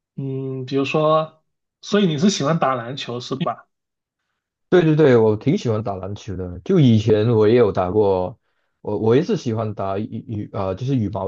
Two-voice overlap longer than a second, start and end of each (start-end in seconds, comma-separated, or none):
none